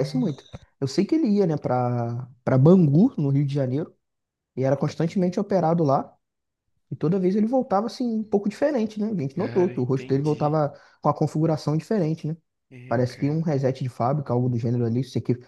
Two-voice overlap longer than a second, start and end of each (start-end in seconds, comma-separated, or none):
9.3-10.6